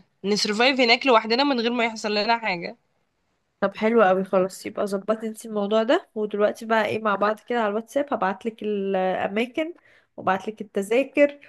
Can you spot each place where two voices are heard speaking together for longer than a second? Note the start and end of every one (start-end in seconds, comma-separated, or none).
none